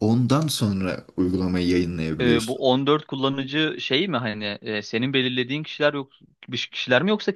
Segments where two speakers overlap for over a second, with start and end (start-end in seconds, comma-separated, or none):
none